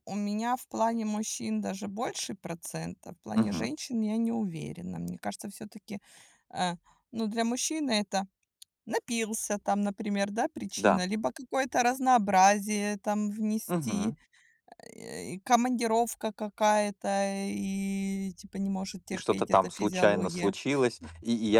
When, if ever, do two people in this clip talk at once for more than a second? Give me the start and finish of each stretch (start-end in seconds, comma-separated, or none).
19.1-20.5